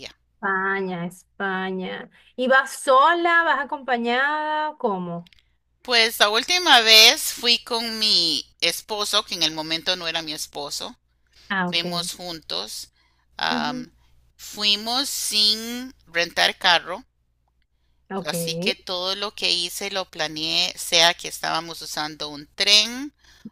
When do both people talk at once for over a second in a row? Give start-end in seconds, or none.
none